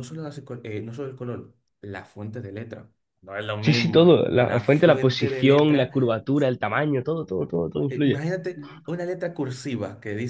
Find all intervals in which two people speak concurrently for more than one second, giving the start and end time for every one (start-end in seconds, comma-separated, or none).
3.6-5.9